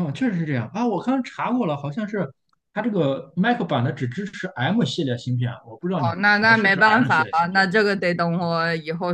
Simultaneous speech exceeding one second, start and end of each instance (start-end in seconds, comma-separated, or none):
6.0-7.7